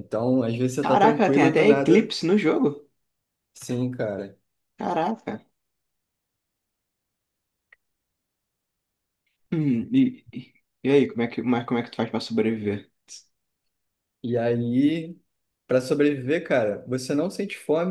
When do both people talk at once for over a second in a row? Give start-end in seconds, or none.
0.8-2.1